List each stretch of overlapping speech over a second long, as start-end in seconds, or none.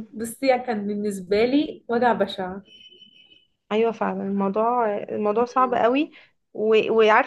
none